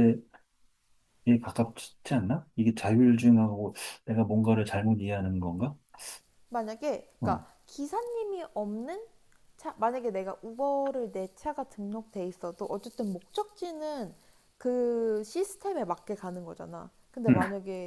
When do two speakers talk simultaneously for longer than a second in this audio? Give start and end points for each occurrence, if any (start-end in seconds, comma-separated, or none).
none